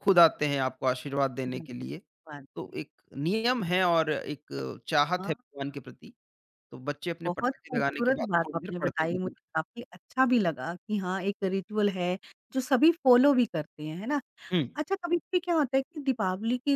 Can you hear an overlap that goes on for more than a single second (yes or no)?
yes